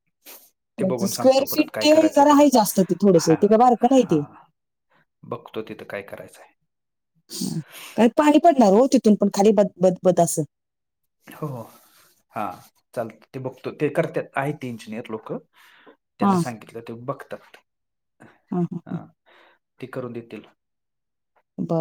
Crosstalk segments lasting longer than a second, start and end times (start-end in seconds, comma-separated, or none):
0.8-2.5